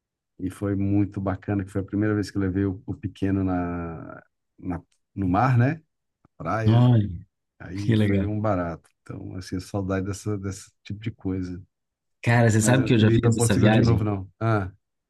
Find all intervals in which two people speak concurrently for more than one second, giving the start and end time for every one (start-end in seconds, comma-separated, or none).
12.6-14.1